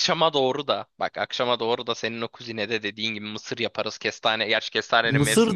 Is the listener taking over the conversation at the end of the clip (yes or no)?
yes